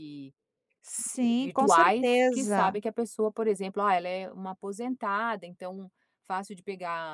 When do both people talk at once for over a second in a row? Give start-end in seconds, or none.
1.4-2.8